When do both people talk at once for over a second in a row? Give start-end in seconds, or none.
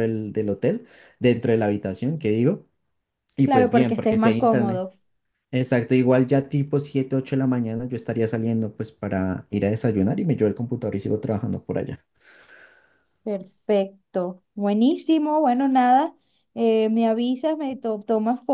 3.4-4.8